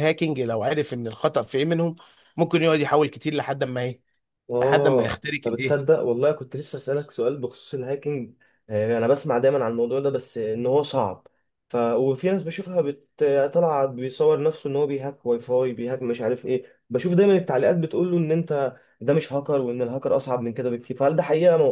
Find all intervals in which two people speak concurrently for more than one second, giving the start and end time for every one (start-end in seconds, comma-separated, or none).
4.6-5.9